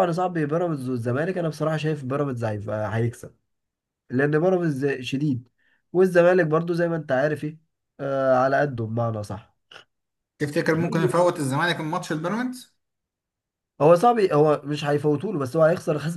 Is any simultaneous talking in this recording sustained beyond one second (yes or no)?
no